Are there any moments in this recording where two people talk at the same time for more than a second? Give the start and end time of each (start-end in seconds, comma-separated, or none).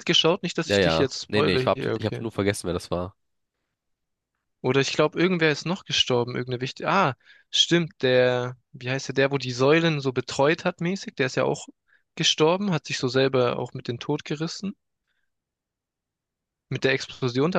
0.6-2.2